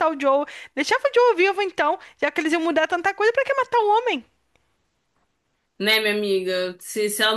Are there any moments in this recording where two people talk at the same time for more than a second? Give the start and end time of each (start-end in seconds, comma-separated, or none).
none